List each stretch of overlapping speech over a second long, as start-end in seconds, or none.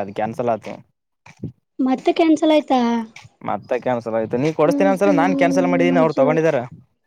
4.7-6.4